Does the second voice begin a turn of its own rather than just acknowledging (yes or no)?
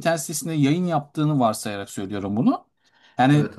no